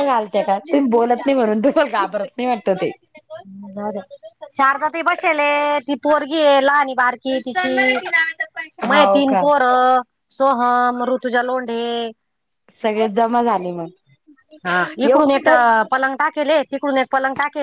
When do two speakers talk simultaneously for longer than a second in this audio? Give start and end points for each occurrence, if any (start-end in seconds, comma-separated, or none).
none